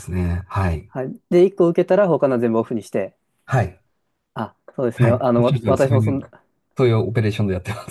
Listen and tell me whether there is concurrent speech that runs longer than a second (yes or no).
yes